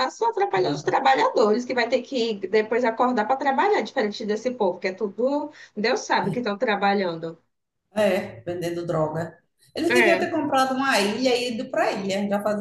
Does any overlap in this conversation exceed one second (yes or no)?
no